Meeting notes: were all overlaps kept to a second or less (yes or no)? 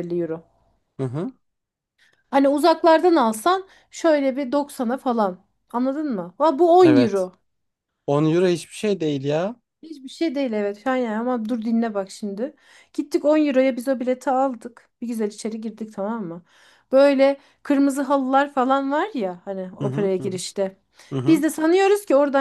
yes